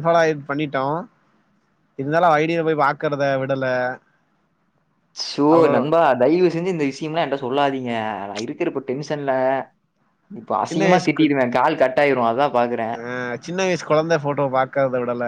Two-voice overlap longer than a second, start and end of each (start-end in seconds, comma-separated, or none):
none